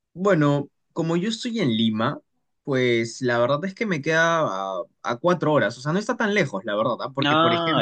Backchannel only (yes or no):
yes